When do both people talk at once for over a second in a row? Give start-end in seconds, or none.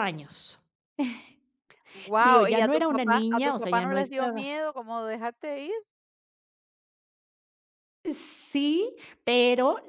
2.2-4.5